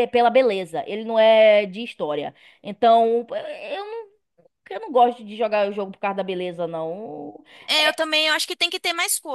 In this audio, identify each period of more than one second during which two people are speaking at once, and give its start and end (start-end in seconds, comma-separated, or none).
none